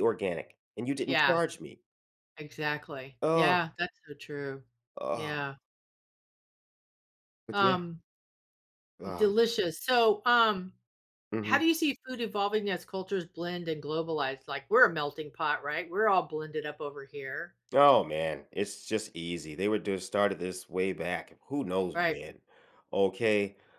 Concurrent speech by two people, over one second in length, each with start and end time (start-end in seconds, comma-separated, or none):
none